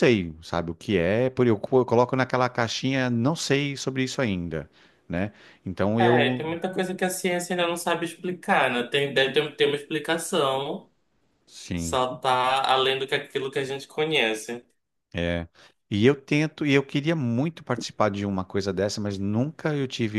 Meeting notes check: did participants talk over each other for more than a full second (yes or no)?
no